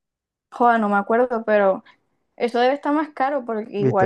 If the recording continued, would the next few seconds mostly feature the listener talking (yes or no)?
yes